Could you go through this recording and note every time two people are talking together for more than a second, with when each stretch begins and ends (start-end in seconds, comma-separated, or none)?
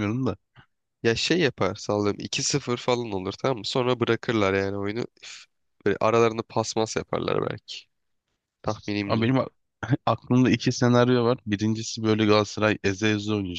none